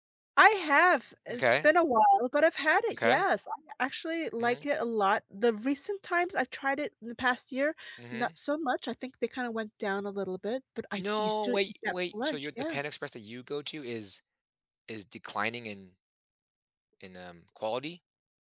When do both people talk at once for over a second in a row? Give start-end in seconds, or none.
11.0-12.8